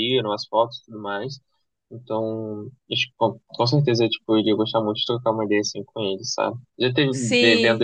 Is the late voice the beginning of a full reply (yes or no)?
no